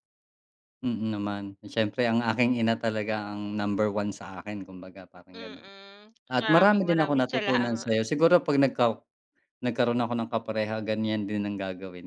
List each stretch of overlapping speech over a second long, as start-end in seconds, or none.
6.3-8.0